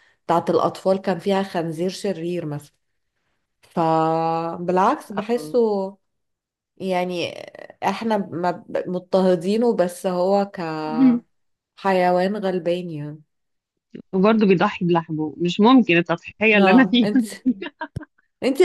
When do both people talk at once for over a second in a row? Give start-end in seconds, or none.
none